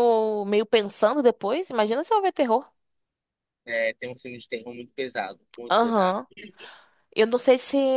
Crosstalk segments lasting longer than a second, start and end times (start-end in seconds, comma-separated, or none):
none